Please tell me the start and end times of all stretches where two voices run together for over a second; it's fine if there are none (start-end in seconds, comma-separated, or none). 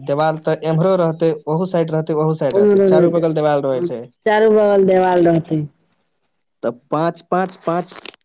2.6-3.9